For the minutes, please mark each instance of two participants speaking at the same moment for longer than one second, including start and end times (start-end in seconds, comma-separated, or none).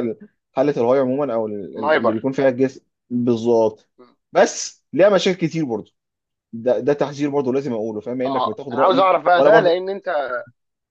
8.3-9.8